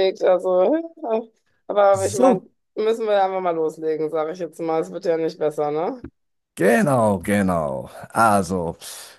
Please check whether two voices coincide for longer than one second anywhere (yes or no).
no